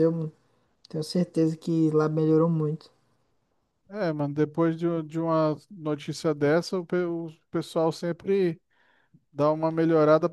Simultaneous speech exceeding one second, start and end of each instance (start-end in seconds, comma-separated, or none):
none